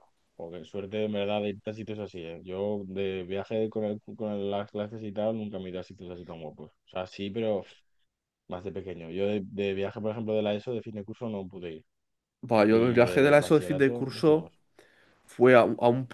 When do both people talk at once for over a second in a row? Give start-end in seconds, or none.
12.7-14.5